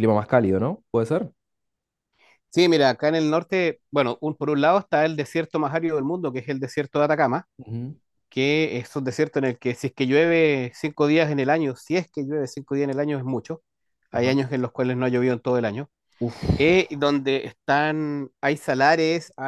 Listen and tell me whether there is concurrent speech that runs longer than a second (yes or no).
no